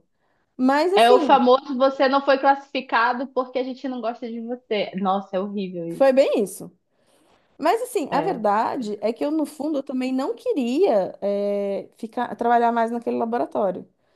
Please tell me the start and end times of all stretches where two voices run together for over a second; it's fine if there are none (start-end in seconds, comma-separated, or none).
none